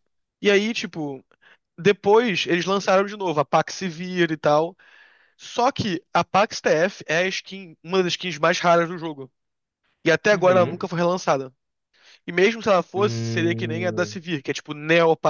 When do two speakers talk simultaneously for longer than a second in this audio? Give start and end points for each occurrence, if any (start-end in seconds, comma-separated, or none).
12.9-14.2